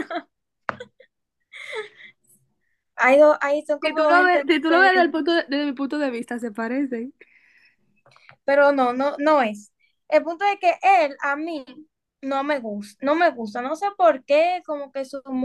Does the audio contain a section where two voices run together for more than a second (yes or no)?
yes